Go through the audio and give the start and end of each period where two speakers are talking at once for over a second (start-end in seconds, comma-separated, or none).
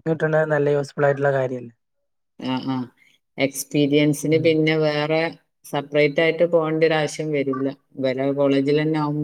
none